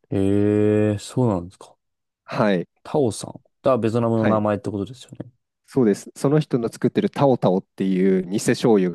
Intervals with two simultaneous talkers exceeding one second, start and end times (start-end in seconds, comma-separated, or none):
none